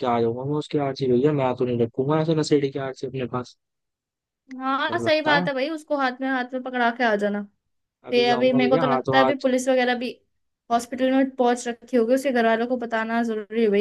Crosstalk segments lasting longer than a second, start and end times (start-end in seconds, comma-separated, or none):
8.1-9.4